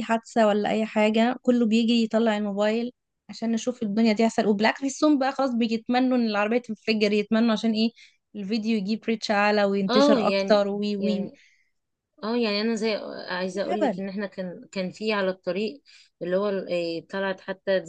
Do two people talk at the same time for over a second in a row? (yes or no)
yes